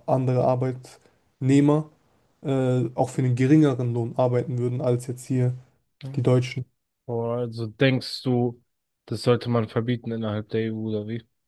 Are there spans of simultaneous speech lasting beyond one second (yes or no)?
no